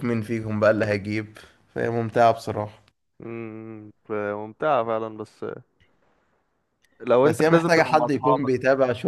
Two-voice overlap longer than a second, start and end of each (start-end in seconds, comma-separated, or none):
7.2-8.5